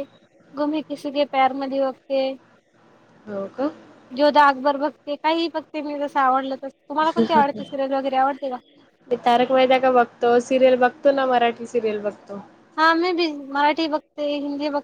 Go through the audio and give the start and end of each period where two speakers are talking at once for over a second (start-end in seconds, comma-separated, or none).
none